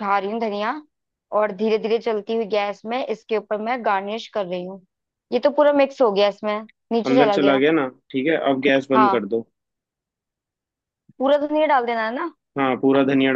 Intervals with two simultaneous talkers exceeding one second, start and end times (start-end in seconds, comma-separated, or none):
none